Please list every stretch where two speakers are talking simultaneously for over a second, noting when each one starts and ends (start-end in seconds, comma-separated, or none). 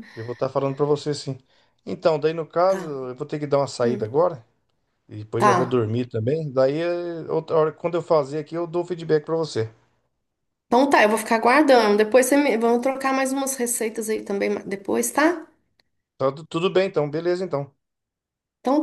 none